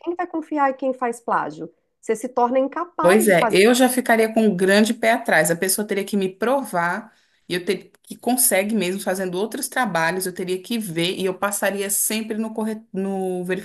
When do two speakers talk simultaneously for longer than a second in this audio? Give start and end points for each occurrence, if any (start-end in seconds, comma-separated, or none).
none